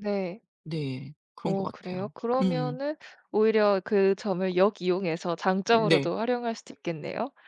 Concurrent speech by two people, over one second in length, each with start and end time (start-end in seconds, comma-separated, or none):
1.4-2.8